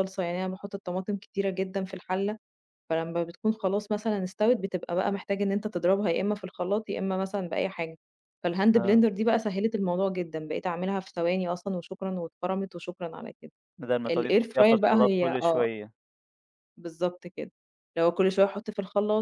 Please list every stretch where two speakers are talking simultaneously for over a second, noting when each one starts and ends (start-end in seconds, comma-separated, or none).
14.1-15.7